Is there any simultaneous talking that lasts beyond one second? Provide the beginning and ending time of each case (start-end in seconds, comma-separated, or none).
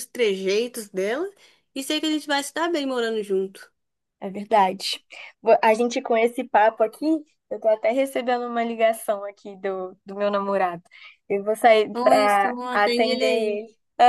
11.9-13.6